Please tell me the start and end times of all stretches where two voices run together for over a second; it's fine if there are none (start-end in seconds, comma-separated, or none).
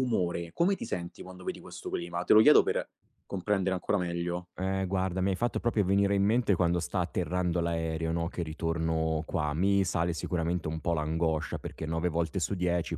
none